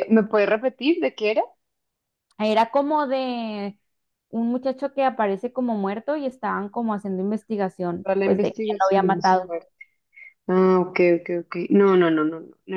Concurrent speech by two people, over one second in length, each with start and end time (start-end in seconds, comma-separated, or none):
8.0-9.4